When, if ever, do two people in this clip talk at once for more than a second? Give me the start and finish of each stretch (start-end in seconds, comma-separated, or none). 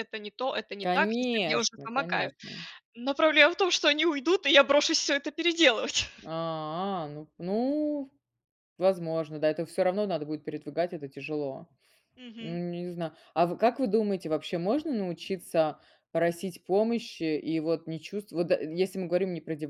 0.8-2.3